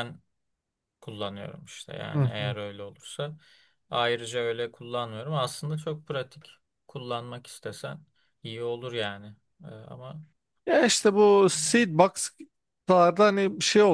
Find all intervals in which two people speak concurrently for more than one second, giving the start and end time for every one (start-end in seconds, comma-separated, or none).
none